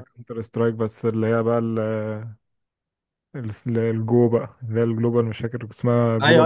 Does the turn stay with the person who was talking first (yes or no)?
no